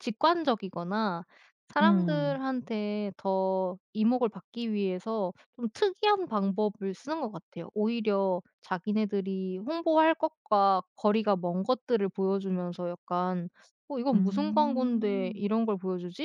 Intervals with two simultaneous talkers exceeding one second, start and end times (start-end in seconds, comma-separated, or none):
14.1-15.4